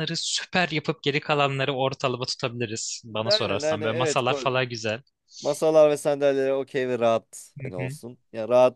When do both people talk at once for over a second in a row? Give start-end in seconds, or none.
3.2-4.7